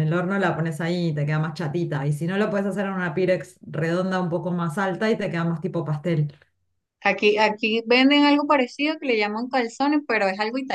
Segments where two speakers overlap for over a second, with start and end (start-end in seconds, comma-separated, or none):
none